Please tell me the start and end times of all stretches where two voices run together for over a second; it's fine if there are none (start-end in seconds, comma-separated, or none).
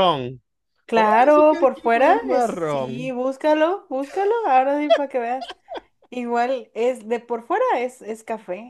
0.9-3.1